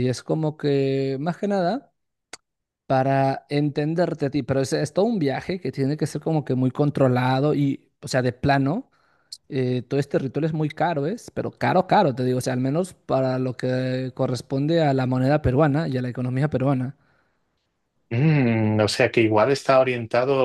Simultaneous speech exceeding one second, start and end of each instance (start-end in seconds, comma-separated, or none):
none